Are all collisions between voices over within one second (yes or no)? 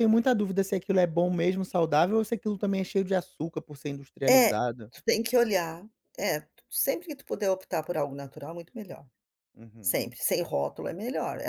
yes